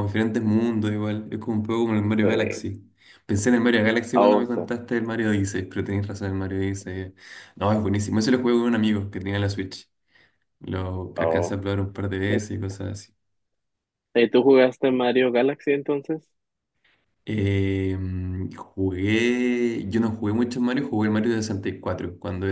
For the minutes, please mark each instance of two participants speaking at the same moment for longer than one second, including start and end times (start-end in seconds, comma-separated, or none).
none